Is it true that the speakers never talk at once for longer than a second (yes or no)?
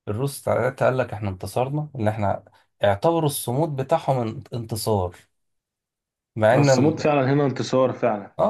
yes